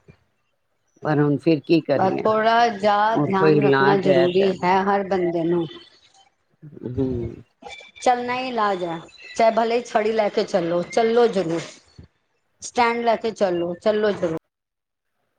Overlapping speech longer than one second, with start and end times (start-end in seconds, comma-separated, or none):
3.1-4.5